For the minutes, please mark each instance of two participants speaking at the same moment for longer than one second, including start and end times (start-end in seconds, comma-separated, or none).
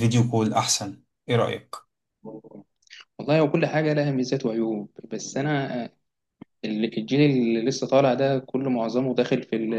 none